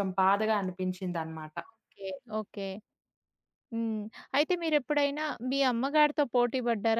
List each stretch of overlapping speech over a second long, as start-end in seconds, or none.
none